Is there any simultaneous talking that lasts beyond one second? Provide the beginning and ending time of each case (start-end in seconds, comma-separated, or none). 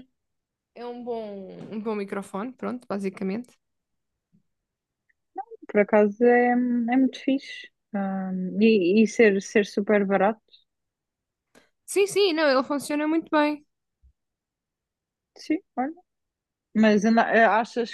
none